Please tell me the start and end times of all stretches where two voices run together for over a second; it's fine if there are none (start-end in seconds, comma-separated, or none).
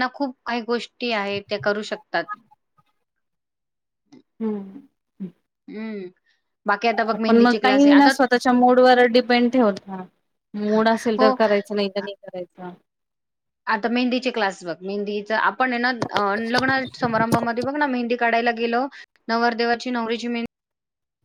none